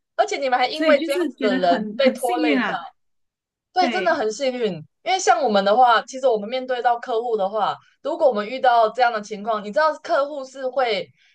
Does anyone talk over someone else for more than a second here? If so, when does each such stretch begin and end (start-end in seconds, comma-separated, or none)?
0.7-2.7